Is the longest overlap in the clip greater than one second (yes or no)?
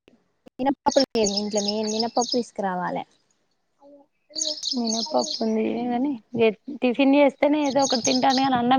no